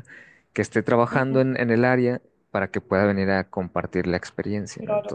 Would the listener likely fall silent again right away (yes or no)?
no